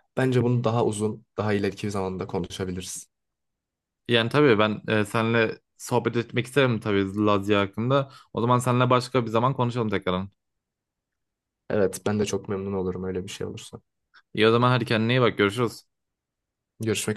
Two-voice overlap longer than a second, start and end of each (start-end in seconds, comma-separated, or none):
none